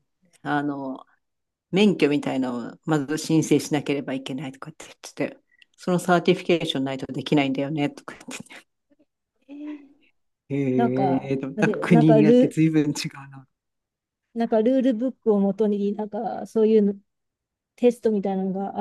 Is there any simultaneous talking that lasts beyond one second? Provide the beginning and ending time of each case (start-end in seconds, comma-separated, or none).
10.8-12.6